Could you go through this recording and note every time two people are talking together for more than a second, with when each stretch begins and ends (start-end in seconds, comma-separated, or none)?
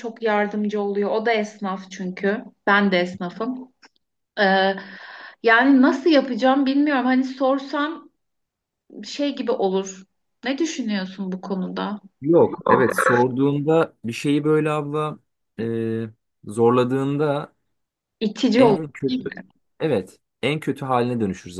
none